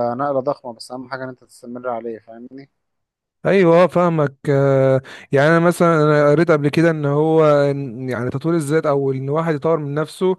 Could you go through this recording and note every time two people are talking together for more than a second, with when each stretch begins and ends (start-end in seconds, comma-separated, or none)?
none